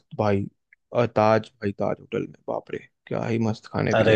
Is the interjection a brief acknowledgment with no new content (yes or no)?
no